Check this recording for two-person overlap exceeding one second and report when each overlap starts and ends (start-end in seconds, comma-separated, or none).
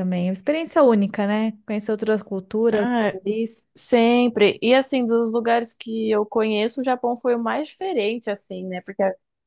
none